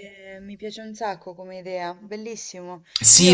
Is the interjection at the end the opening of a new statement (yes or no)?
yes